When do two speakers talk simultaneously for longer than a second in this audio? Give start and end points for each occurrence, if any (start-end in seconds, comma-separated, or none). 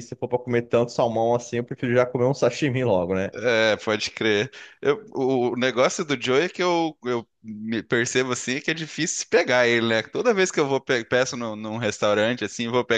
none